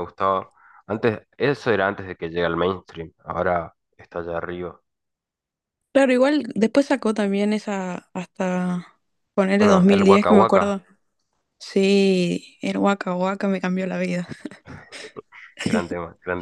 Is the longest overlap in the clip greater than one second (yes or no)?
yes